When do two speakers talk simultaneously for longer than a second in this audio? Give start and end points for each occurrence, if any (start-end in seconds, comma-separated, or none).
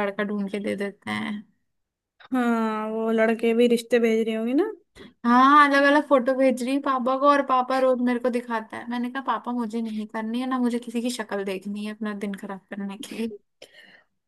none